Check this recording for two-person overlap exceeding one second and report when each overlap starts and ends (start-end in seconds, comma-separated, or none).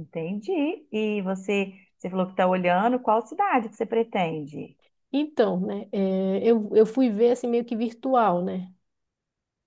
none